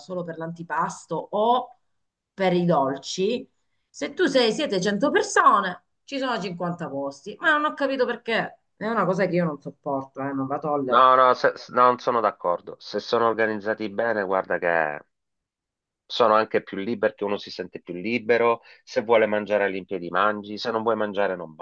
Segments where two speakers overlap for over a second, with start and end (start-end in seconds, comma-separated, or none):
none